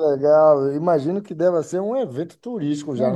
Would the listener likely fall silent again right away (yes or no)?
no